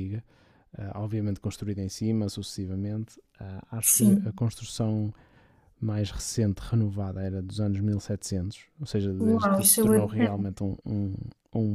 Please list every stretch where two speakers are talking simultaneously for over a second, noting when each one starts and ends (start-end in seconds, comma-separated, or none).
9.2-10.4